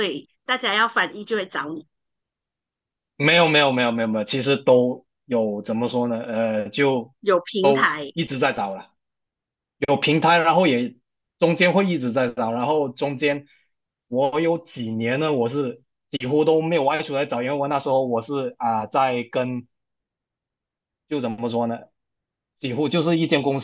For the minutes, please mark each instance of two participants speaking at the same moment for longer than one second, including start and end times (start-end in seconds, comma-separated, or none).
none